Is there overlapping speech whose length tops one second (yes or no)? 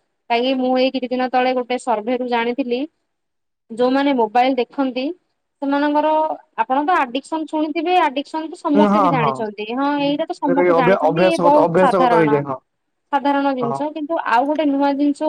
yes